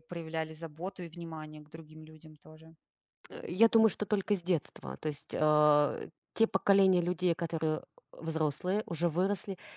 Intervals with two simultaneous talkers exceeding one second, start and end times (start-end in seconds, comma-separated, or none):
none